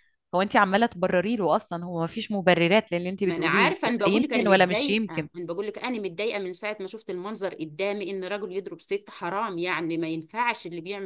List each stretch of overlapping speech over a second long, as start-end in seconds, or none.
3.2-5.3